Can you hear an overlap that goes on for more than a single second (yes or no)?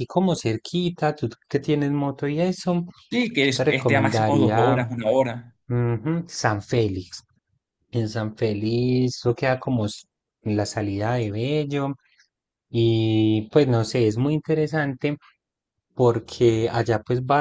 yes